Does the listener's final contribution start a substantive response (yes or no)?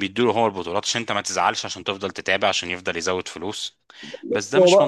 yes